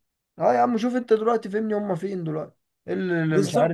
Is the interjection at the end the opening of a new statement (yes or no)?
no